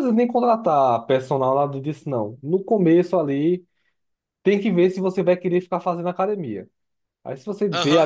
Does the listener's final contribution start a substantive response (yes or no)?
no